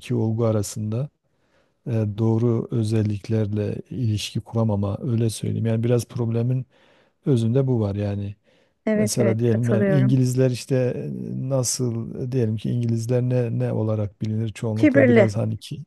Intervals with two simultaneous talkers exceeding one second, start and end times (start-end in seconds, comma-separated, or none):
8.9-10.2